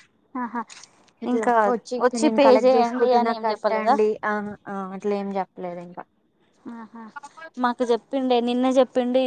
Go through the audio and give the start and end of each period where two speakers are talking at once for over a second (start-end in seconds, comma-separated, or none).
2.4-4.0